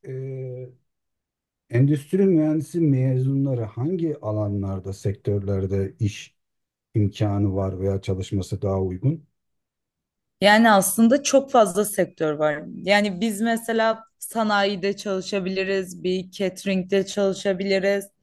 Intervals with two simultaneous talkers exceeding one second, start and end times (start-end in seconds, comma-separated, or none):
none